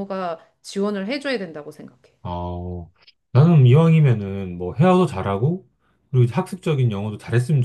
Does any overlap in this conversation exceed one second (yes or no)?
no